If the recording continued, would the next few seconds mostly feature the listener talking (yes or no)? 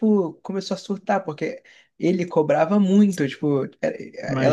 no